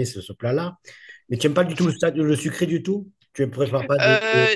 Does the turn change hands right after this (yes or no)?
yes